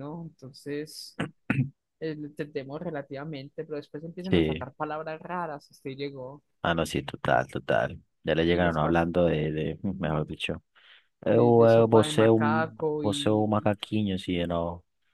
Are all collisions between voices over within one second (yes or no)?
no